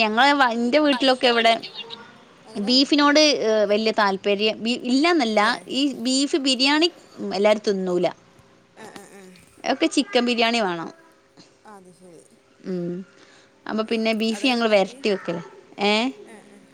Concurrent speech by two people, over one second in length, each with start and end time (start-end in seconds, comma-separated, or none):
none